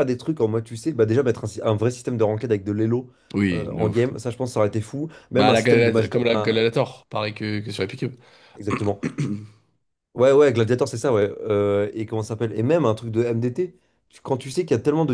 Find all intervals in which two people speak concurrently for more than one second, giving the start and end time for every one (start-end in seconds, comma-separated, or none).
5.3-6.6